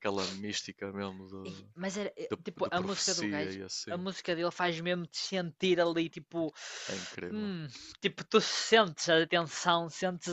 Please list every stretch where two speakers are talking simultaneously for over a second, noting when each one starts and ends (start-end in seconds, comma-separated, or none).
2.3-4.1